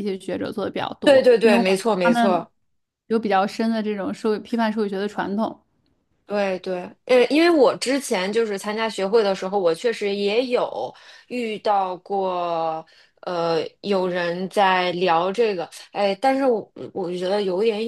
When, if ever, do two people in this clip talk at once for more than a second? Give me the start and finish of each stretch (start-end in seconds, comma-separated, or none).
1.0-2.5